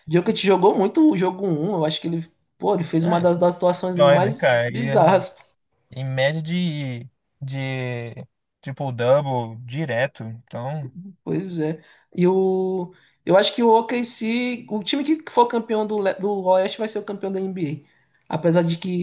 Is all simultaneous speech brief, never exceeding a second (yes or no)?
no